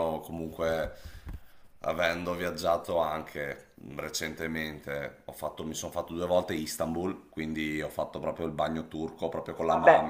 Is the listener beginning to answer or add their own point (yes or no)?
no